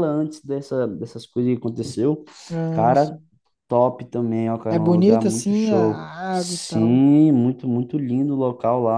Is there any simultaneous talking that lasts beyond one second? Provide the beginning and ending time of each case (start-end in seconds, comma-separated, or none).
4.7-7.0